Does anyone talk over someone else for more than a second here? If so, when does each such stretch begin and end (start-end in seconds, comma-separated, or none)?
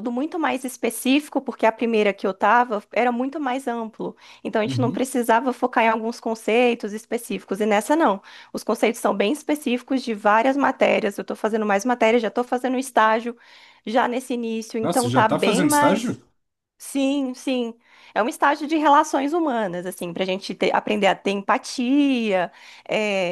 14.8-16.2